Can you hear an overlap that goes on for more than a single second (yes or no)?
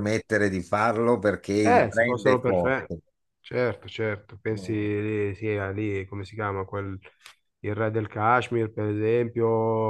yes